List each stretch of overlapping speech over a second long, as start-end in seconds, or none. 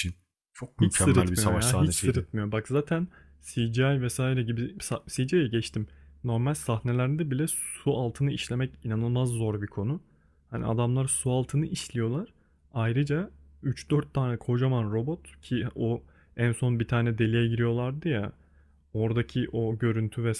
0.8-2.3